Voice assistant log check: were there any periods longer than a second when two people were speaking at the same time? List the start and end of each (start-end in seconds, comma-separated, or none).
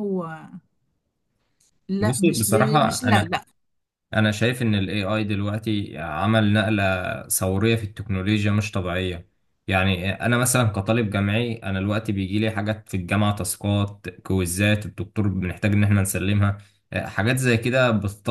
2.0-3.4